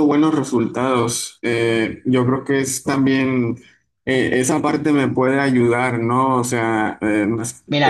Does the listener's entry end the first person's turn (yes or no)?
yes